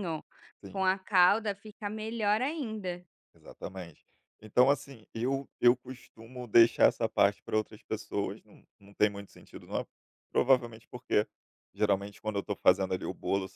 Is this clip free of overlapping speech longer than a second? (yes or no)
yes